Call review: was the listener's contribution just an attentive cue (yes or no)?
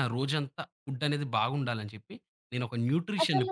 yes